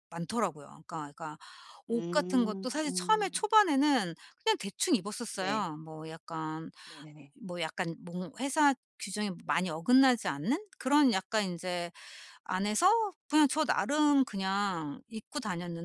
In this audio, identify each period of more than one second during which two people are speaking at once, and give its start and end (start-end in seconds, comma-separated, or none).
1.9-3.5